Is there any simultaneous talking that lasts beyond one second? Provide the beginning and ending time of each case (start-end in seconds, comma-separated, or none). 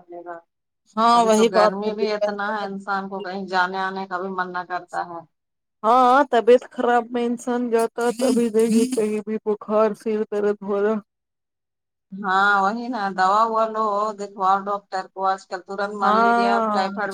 1.1-3.2